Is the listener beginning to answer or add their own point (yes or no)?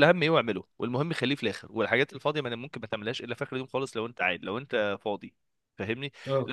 no